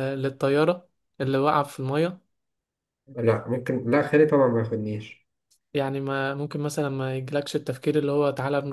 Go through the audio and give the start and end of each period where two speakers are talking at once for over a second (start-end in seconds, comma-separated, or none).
none